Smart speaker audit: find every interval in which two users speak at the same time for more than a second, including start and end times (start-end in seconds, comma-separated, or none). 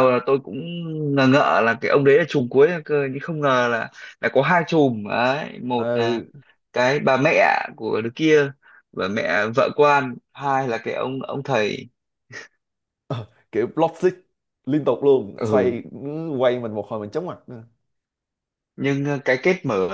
none